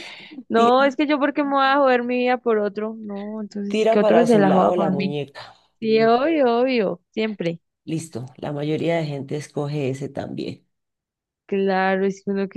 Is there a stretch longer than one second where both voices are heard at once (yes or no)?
yes